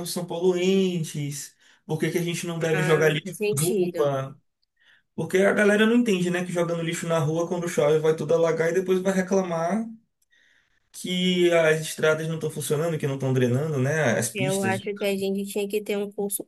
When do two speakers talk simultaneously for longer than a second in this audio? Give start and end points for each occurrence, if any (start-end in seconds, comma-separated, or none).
2.7-4.1